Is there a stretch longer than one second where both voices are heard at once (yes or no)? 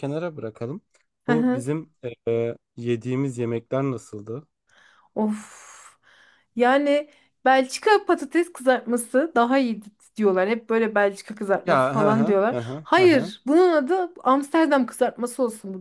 yes